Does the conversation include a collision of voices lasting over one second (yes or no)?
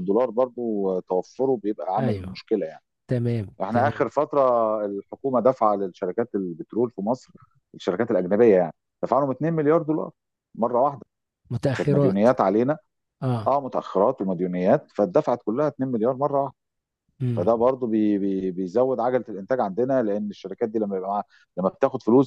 no